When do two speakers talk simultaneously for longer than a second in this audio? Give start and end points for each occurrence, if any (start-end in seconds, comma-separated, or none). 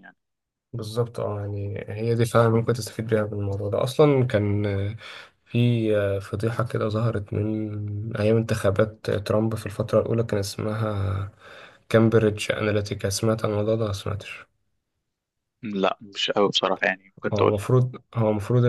none